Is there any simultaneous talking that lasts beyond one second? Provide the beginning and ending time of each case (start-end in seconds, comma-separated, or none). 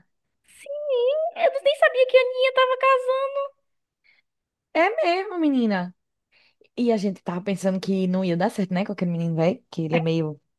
none